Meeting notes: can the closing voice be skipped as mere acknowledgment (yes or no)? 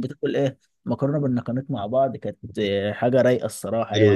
no